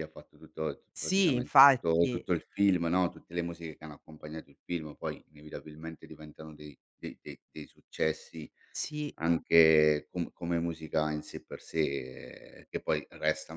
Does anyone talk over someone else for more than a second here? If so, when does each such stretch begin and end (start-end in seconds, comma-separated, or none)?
0.9-2.2